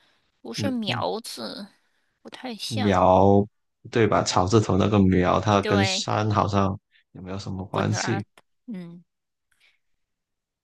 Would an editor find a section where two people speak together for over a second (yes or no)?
no